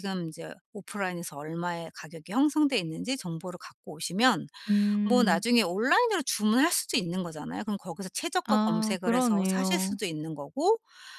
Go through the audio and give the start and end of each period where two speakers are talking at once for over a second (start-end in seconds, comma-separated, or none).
8.4-10.0